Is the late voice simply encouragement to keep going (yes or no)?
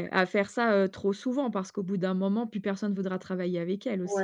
no